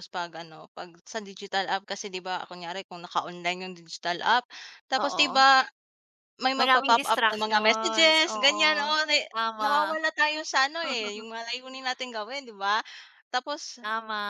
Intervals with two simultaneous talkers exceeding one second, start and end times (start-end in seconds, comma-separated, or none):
6.6-8.9